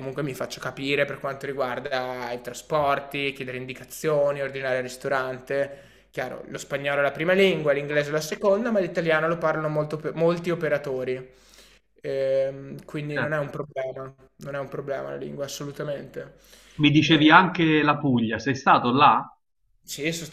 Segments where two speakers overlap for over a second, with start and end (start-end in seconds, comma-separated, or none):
none